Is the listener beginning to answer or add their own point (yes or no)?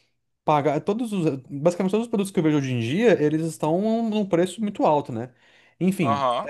no